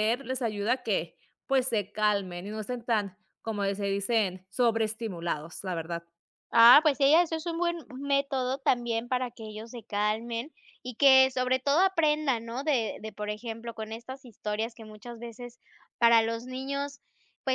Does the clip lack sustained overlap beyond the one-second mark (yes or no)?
yes